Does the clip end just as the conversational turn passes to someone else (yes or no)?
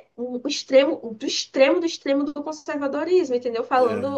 no